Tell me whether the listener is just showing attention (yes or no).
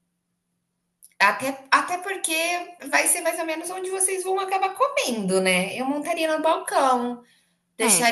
yes